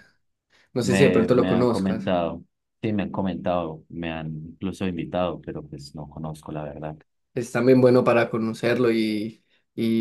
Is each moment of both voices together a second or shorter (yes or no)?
no